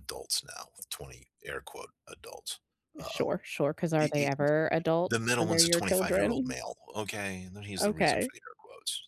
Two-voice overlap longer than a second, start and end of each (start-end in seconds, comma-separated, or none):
5.1-6.6